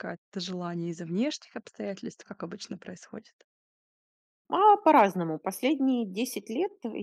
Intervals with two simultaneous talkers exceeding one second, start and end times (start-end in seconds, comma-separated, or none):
none